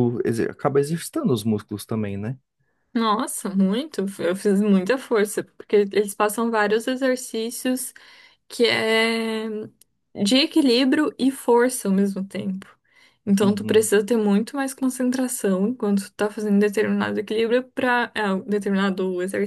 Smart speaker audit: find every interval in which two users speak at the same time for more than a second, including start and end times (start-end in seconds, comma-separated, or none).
none